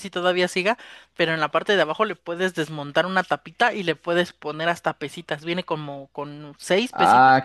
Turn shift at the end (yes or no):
yes